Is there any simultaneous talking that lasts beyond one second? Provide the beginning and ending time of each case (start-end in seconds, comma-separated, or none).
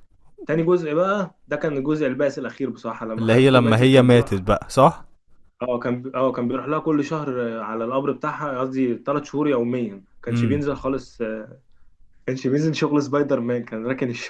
3.2-4.4